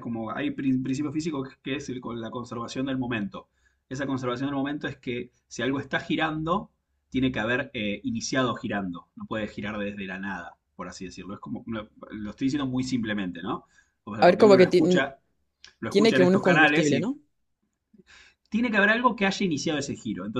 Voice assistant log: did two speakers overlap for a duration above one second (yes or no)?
yes